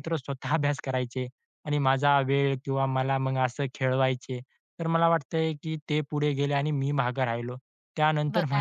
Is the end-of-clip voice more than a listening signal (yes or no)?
no